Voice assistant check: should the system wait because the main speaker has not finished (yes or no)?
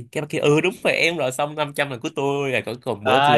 no